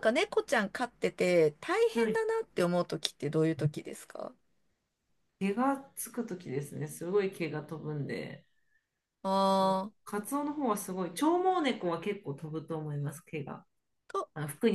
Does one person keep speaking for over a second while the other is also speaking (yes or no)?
no